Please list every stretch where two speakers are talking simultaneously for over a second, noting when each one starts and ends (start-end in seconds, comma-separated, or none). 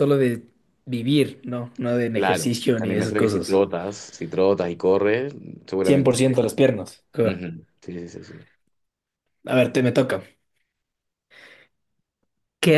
2.1-3.6